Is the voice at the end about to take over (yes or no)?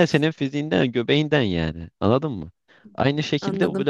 no